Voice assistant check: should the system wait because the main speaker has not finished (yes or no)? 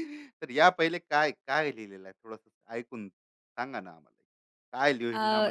yes